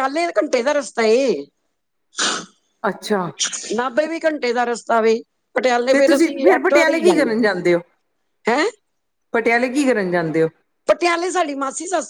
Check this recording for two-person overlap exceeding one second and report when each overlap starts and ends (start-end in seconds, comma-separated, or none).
5.9-7.5